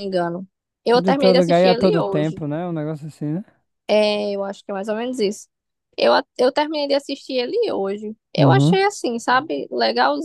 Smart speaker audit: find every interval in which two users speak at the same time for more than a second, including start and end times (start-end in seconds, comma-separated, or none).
0.9-2.4